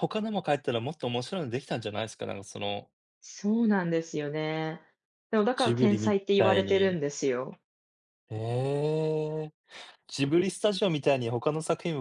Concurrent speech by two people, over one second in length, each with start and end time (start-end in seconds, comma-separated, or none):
5.5-7.0